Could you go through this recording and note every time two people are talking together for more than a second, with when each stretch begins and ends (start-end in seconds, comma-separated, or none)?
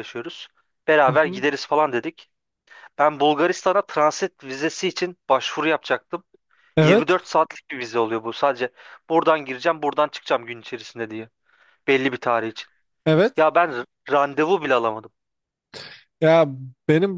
none